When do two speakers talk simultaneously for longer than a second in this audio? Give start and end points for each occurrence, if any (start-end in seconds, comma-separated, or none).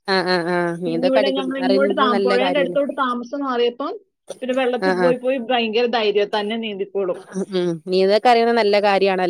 0.8-2.8